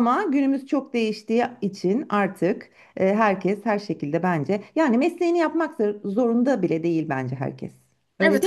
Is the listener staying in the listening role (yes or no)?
no